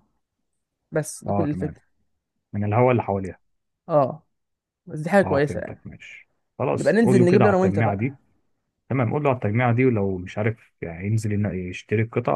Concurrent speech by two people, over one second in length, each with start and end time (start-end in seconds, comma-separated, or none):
6.8-8.2